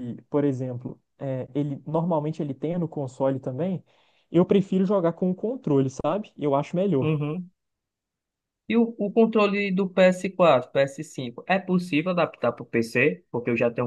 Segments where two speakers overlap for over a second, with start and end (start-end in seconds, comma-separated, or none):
none